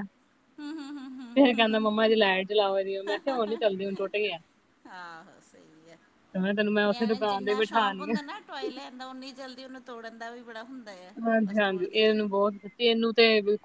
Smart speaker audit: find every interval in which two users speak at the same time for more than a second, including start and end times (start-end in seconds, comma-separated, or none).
6.9-8.1